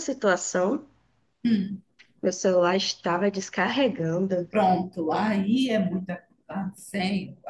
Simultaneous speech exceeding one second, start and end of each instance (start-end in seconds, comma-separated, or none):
none